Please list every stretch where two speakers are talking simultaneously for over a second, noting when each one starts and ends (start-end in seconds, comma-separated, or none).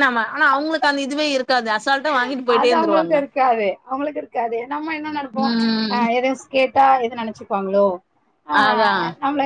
none